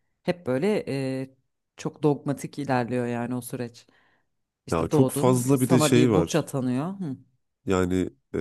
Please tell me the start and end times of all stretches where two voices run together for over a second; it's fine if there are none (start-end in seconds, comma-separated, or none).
4.7-6.5